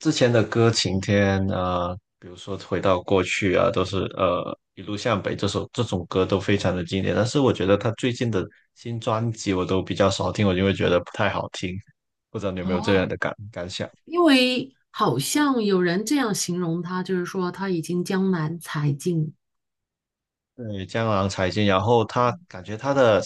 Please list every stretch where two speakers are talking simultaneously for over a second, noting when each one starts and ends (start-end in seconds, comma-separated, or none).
none